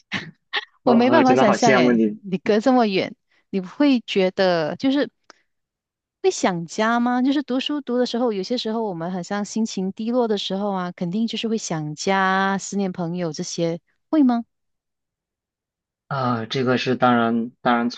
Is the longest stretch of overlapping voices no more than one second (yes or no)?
no